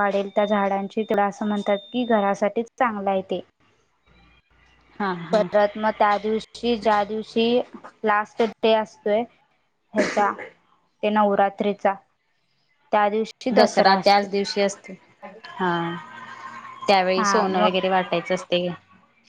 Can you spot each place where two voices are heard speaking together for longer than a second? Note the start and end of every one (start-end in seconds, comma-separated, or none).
none